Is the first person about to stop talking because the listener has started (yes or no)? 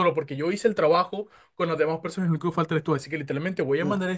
no